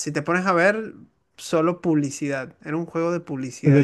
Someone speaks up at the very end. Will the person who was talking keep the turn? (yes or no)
no